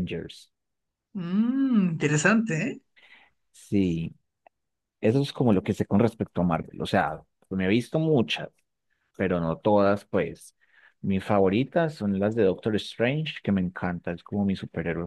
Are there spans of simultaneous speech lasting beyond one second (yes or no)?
no